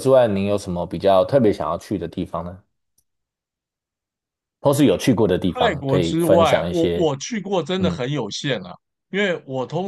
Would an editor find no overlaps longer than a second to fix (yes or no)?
no